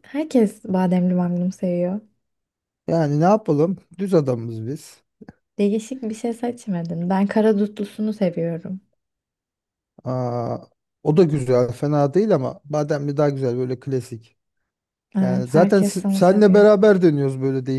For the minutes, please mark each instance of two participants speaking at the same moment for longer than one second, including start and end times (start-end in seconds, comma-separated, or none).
15.2-16.6